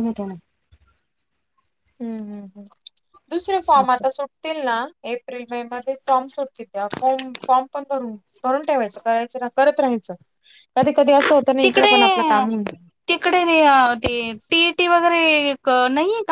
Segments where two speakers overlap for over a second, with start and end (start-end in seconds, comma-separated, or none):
none